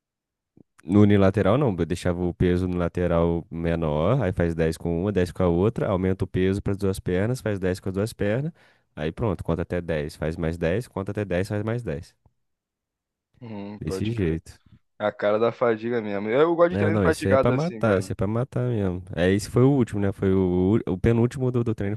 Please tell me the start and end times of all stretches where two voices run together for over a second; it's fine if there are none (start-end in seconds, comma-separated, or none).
16.7-18.1